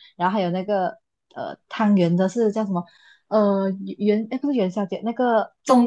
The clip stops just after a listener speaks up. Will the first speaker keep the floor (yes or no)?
yes